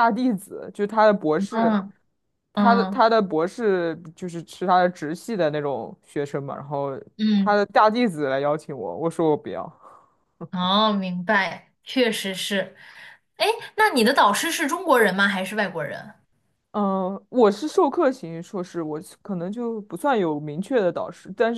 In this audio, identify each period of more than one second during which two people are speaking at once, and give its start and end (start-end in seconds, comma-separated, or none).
none